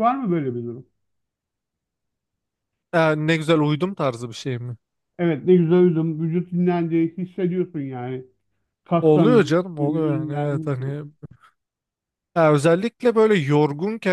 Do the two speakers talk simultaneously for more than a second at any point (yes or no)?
yes